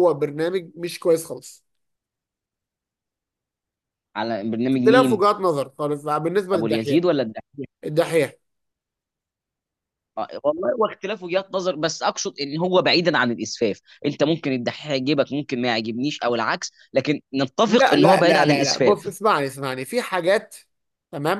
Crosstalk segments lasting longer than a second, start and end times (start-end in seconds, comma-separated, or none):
17.6-19.1